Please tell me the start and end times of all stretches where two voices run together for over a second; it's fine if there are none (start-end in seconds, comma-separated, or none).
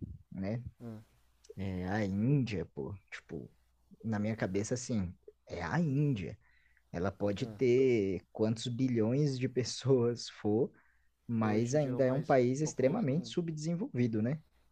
11.4-13.4